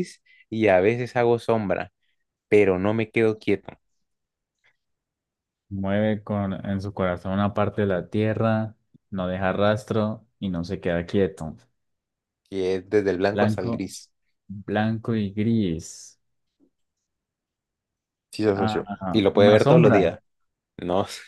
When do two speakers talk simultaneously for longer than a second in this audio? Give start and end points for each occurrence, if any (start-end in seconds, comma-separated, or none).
18.5-20.2